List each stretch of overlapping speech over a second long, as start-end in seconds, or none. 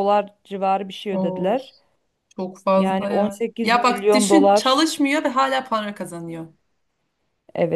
2.8-4.8